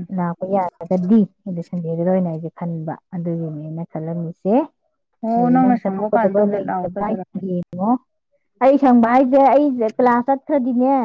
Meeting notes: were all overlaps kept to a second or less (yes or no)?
no